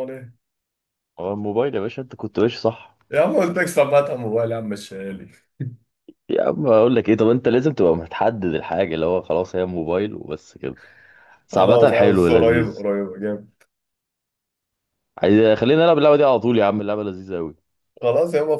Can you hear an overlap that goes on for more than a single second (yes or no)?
yes